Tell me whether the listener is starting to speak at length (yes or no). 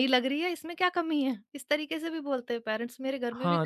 yes